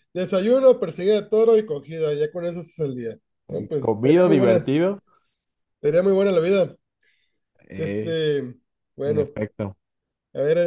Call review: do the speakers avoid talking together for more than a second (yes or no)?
no